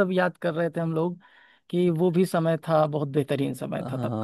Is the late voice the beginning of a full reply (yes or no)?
yes